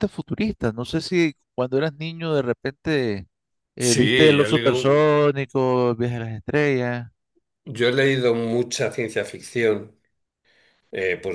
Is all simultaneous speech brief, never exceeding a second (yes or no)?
no